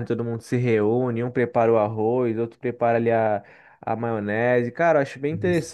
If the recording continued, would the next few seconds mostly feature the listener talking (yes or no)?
no